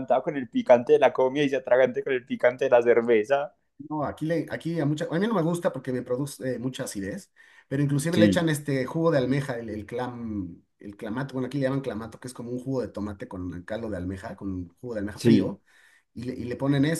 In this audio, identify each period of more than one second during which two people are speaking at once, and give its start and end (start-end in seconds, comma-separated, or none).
none